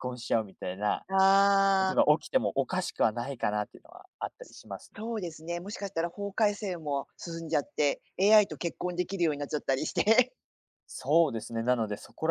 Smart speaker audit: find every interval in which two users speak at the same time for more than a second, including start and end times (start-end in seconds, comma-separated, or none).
none